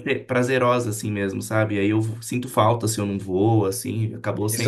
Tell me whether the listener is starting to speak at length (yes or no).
yes